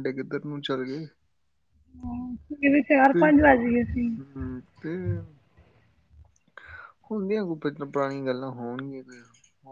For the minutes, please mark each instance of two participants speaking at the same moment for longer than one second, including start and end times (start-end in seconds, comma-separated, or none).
none